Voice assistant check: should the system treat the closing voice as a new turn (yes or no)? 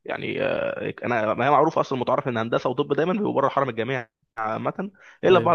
no